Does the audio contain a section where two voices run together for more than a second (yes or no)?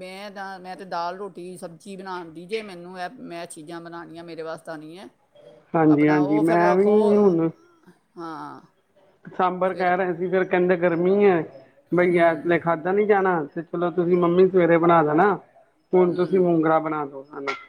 no